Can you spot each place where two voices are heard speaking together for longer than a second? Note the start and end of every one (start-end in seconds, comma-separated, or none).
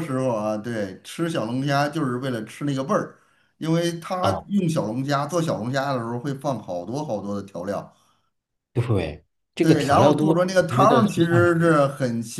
9.6-11.7